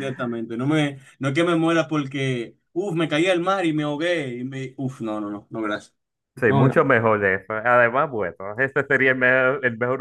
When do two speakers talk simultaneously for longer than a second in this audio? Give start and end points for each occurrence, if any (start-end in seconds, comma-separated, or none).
none